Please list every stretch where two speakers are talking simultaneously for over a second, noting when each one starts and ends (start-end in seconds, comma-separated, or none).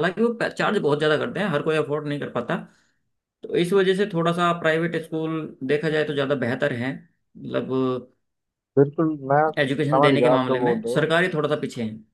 9.6-11.1